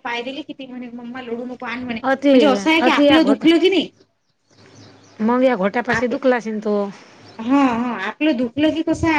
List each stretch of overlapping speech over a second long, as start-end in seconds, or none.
none